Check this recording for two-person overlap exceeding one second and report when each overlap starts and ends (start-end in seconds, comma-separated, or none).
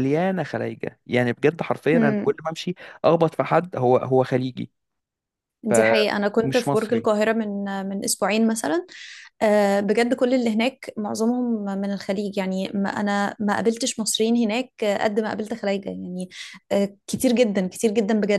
5.7-7.1